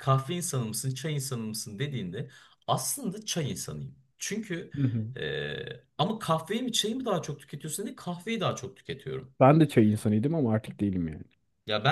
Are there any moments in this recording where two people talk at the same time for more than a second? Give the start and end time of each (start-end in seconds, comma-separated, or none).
none